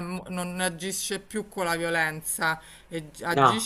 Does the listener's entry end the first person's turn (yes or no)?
no